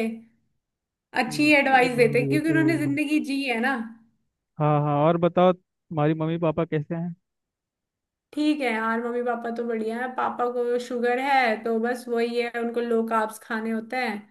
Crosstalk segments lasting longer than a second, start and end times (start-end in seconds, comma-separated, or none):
1.3-3.0